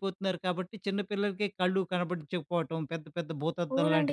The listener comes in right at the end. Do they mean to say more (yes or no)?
yes